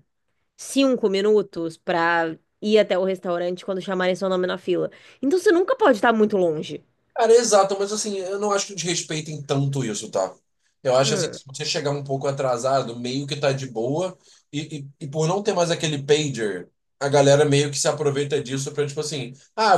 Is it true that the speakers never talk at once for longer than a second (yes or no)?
yes